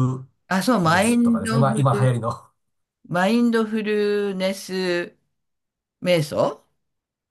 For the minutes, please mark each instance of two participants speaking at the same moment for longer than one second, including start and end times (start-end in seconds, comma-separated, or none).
0.8-2.1